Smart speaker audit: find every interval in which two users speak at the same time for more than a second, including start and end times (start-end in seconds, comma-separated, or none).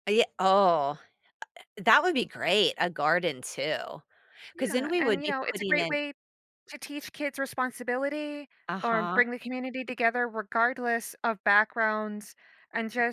4.6-6.0